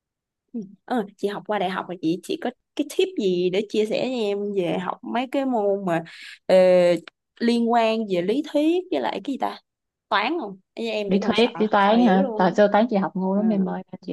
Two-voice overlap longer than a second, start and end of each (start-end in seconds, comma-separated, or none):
11.1-12.6